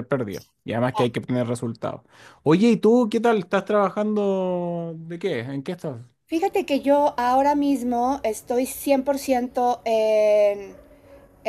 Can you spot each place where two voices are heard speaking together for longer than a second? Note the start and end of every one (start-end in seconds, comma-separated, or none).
none